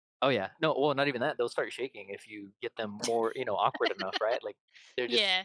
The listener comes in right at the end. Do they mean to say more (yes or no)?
no